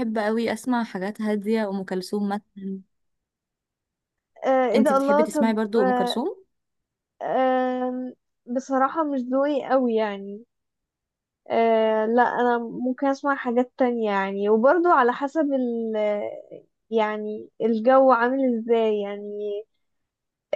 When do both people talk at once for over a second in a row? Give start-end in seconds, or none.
4.7-6.2